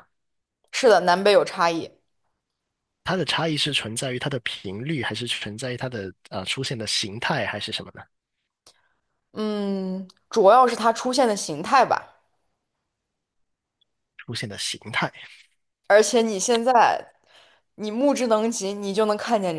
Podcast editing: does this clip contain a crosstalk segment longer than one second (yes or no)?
no